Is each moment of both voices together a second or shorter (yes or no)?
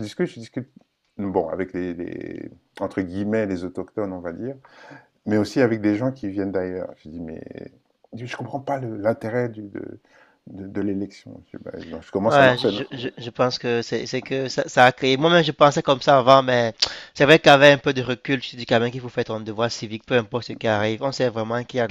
yes